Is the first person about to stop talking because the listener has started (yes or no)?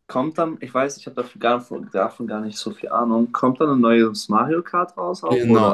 yes